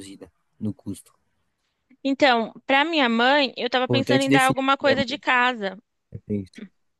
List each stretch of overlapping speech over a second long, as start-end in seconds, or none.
3.8-5.2